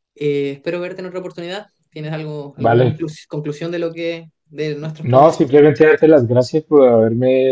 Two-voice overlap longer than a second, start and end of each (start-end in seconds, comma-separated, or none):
none